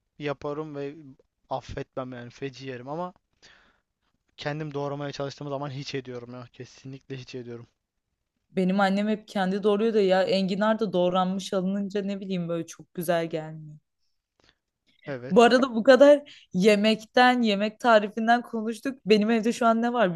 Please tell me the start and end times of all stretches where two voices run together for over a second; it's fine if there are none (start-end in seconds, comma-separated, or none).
none